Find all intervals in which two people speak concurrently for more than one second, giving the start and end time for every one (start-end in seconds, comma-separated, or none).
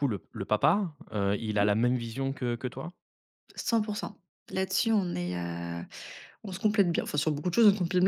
none